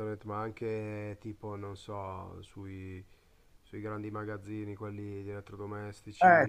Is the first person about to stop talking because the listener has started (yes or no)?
yes